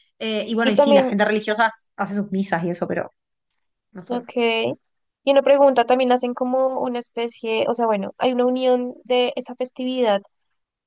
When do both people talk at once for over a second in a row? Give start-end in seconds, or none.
none